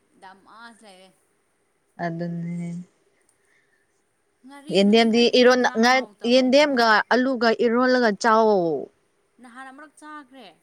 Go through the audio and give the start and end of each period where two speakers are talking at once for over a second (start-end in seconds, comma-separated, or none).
4.7-6.8